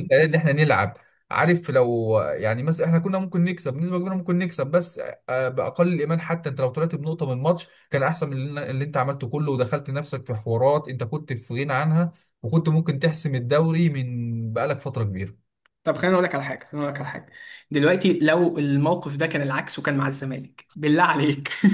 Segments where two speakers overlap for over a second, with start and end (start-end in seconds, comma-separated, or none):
none